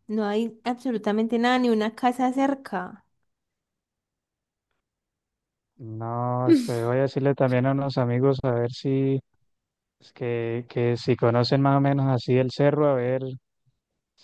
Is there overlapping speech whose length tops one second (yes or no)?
no